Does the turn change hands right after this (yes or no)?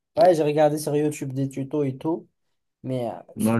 yes